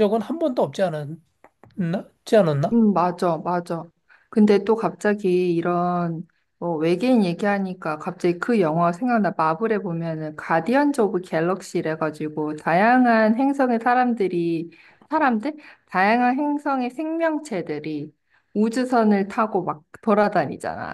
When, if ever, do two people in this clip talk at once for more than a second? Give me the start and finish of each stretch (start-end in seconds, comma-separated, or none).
none